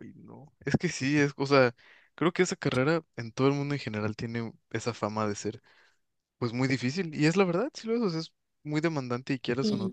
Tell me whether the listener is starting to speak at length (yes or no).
no